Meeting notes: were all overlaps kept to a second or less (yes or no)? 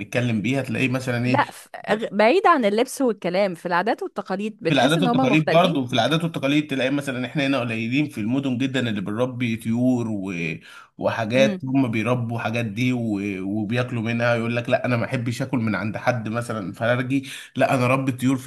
no